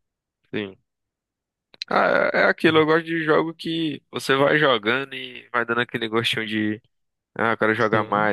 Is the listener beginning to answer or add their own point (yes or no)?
no